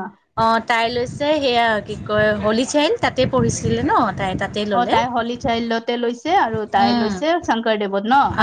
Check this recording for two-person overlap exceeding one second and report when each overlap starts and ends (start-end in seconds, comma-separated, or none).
none